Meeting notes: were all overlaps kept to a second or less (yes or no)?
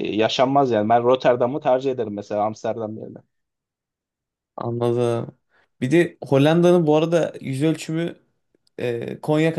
yes